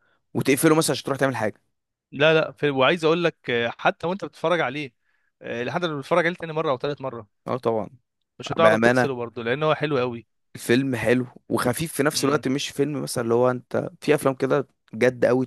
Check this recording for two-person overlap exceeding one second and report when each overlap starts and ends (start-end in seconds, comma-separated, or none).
none